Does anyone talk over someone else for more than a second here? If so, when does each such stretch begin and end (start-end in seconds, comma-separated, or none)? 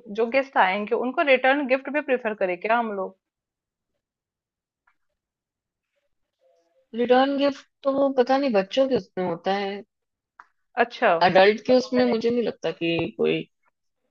none